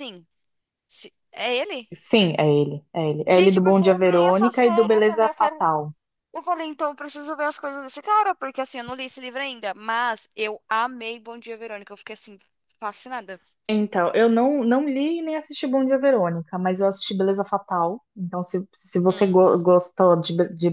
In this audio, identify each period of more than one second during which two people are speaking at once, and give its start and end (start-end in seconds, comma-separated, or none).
3.3-5.6